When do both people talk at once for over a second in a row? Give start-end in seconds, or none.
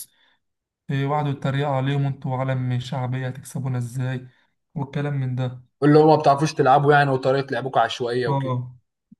none